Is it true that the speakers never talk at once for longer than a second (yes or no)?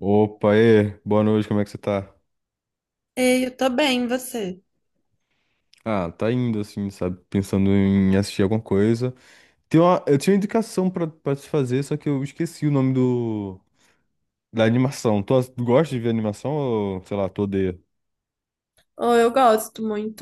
yes